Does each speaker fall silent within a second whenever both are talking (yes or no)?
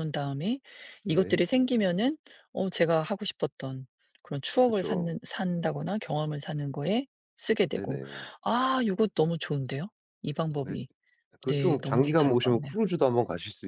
no